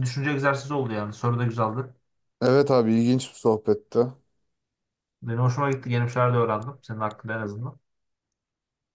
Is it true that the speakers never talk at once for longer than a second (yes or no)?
yes